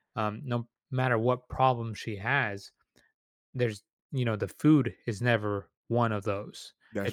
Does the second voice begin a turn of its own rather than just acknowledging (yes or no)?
no